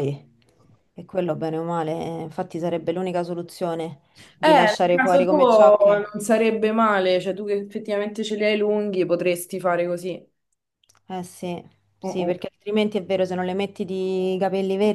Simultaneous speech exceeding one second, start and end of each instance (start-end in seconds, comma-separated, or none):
4.4-6.0